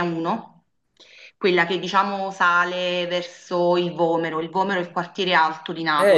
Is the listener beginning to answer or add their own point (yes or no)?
yes